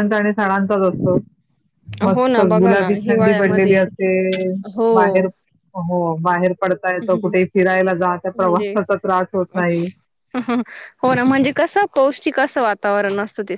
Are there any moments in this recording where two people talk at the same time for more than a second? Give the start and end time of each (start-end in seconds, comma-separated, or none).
2.1-3.8